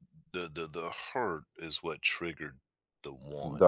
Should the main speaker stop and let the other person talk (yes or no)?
yes